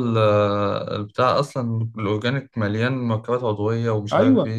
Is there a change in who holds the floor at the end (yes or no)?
yes